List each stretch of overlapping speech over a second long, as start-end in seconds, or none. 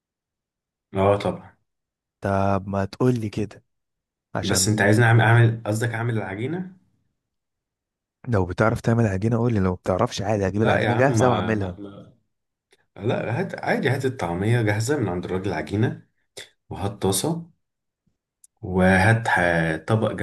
10.5-11.8